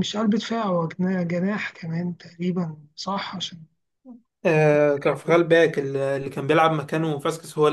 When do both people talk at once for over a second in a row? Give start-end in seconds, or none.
none